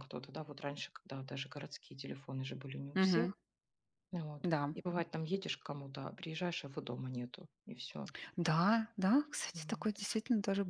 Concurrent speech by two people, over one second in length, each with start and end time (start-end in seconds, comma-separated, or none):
none